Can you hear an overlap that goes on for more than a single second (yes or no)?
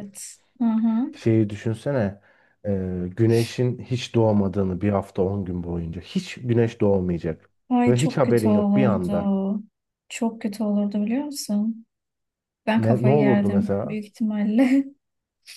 yes